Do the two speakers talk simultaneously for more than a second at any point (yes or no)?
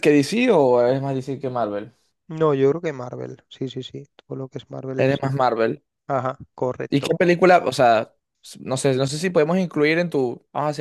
no